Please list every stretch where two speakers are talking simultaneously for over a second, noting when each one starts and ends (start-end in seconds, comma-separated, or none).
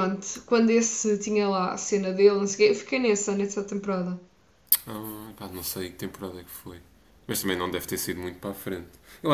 none